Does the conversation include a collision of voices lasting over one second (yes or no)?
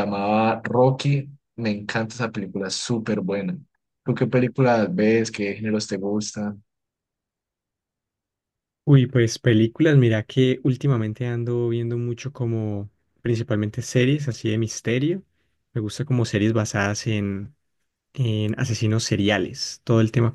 no